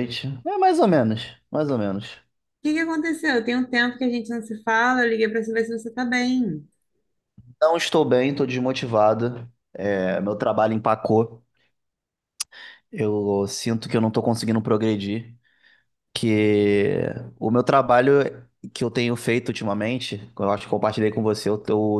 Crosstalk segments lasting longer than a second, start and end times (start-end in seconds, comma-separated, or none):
none